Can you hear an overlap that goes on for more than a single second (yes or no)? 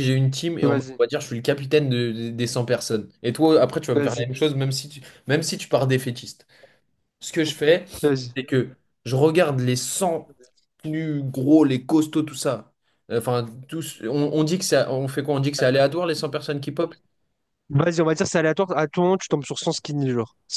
no